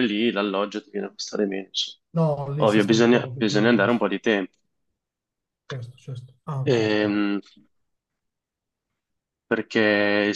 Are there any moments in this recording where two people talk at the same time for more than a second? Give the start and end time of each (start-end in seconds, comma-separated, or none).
2.6-4.0